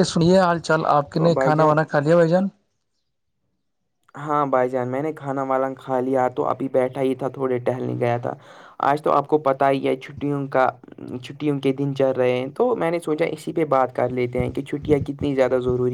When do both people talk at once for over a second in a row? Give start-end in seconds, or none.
none